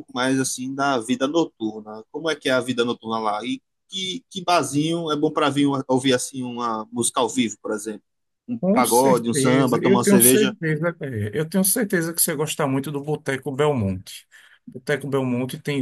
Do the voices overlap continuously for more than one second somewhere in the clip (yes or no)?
yes